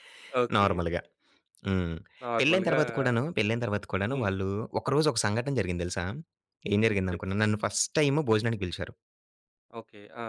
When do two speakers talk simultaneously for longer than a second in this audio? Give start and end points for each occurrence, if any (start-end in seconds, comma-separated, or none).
none